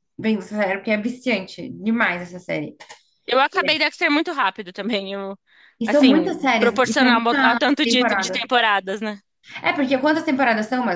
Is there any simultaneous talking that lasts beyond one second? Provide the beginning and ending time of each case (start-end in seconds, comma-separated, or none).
5.8-8.4